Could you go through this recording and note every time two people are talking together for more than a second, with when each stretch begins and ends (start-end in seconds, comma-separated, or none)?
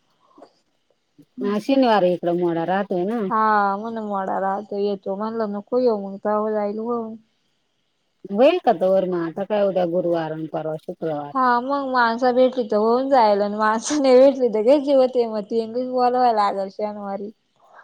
none